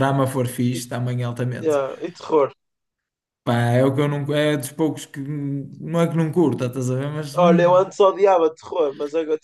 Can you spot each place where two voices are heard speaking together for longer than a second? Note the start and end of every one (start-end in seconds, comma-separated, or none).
none